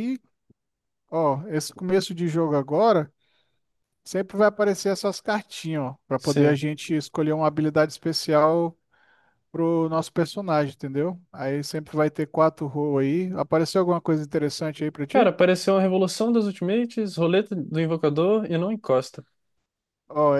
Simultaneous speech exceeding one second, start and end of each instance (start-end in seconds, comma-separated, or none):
none